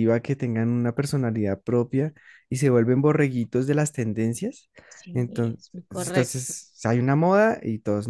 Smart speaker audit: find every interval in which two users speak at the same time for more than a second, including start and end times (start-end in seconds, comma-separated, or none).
5.1-6.5